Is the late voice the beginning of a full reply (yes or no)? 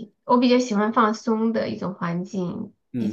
yes